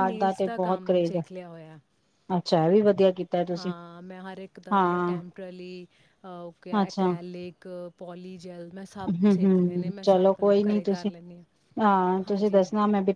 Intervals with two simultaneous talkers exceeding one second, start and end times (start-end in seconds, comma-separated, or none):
9.2-11.1